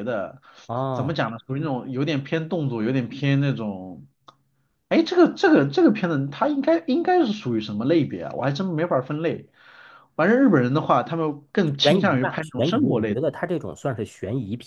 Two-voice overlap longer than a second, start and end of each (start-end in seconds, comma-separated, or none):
11.8-13.2